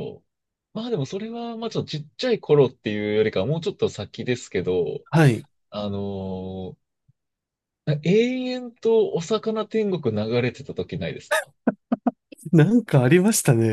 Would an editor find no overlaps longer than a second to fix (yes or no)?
yes